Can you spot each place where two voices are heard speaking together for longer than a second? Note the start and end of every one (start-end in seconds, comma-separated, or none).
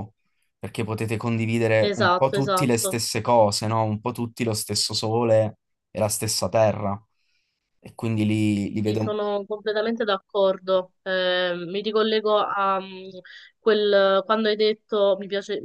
1.8-3.0